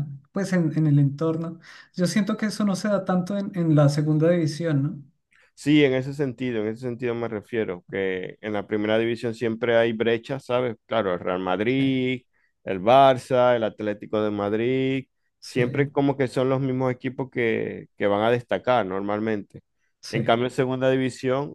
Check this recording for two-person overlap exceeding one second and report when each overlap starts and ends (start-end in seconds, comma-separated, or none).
none